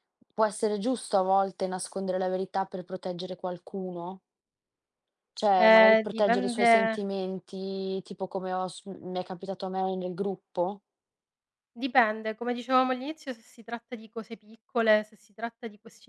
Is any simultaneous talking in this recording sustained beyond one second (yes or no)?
yes